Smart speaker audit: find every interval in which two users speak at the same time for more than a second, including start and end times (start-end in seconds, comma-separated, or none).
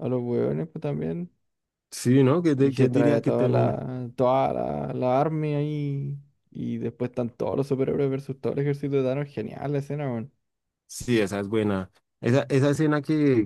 2.6-3.8